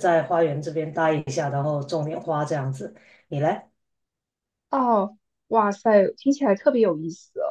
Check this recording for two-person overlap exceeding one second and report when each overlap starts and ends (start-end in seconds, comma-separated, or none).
none